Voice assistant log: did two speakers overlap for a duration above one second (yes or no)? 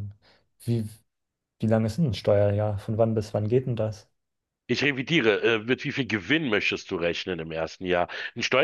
no